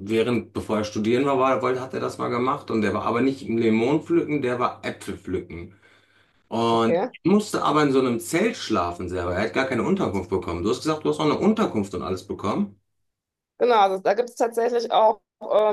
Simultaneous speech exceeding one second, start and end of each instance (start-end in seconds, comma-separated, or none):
none